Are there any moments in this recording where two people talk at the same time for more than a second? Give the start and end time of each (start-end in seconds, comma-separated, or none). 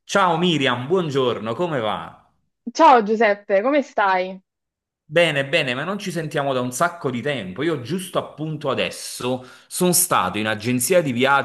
none